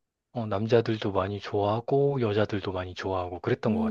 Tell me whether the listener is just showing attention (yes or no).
no